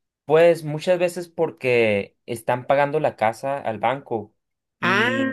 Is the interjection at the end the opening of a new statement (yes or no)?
no